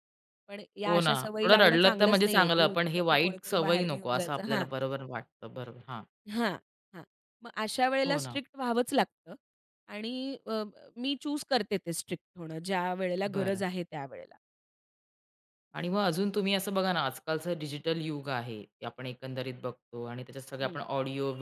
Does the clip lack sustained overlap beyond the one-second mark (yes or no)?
no